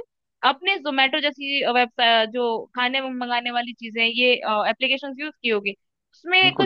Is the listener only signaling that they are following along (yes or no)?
yes